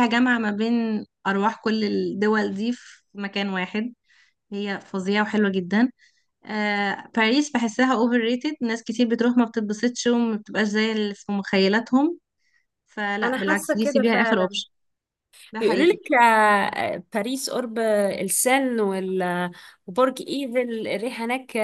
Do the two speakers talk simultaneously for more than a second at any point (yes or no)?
yes